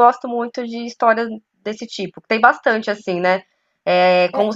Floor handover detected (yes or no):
no